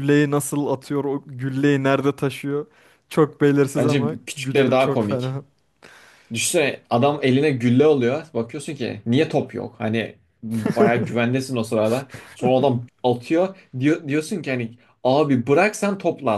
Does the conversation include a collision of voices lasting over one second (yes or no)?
yes